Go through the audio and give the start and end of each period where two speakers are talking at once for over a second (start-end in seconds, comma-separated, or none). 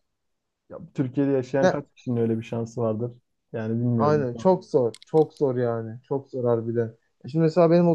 none